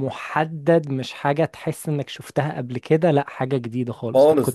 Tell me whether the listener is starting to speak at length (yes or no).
yes